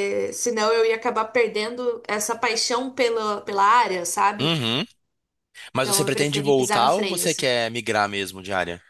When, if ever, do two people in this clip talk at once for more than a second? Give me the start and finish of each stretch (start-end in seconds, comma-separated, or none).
5.8-7.5